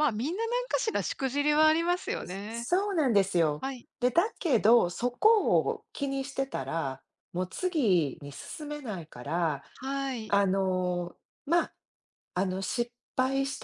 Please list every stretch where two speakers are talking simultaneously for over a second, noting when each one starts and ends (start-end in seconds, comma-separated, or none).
none